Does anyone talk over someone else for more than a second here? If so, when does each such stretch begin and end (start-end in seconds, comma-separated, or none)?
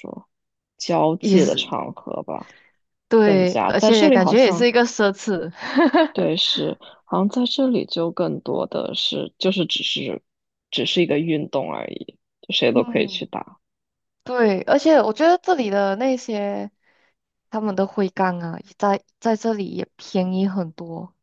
3.2-4.7